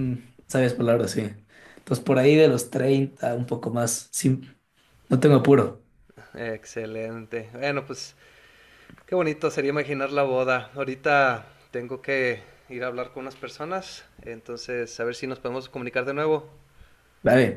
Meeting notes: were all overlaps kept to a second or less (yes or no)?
yes